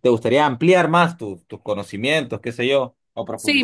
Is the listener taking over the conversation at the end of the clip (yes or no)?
yes